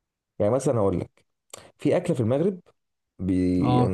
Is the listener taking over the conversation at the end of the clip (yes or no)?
no